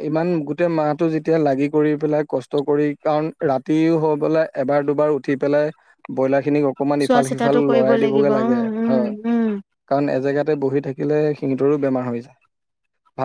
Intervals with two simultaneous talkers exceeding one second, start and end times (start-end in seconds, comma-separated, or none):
7.0-9.1